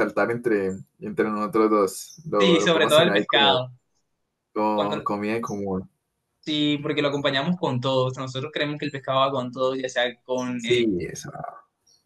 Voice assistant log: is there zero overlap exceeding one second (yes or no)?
no